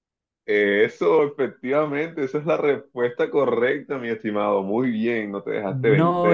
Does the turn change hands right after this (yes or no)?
yes